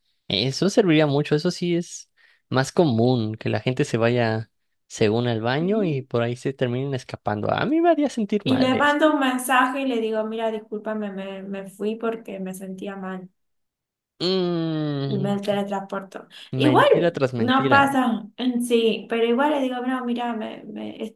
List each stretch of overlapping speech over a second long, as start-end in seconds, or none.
16.6-17.9